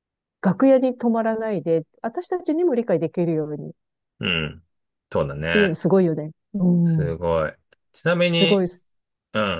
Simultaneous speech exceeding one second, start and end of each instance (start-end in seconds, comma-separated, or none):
none